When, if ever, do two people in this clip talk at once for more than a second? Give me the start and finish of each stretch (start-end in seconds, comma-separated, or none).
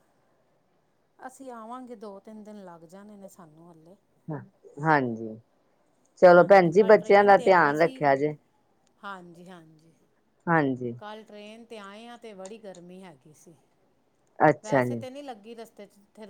6.4-8.0